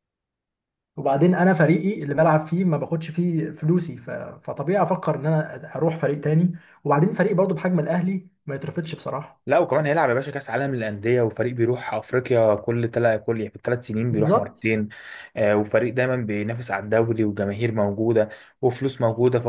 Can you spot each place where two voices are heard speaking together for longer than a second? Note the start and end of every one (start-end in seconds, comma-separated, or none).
none